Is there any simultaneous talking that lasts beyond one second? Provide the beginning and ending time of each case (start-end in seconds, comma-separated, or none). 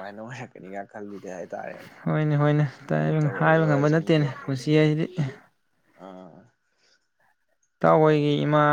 3.4-4.6